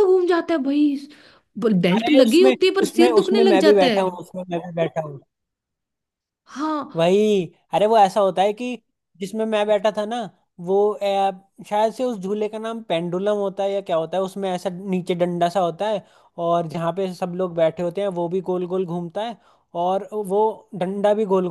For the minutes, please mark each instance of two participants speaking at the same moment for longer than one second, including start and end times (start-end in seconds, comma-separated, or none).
1.9-4.0